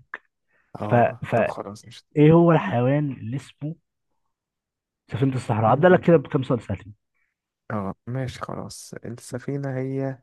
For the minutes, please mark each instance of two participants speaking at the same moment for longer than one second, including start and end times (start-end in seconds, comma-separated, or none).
none